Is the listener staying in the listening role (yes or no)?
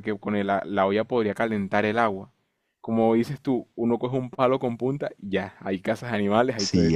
no